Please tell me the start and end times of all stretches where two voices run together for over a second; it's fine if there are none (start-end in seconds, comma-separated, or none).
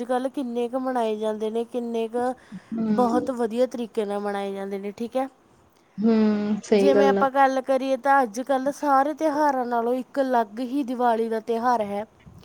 none